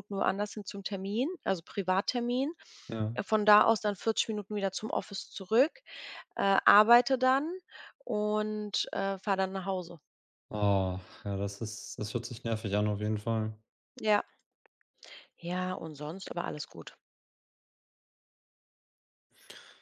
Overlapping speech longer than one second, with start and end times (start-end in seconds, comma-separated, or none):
none